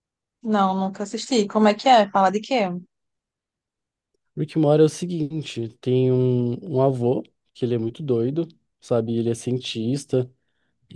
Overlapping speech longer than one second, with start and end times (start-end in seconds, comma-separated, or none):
none